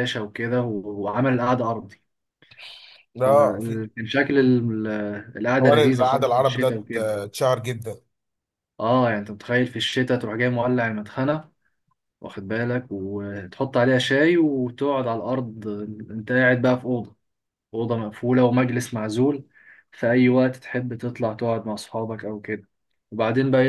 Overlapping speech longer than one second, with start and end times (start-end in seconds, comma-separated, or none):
5.6-7.1